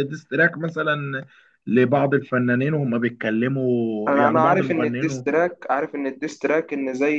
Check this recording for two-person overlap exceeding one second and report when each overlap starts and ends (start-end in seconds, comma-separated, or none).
4.1-5.3